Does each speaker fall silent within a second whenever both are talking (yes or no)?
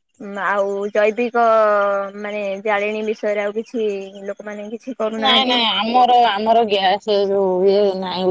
yes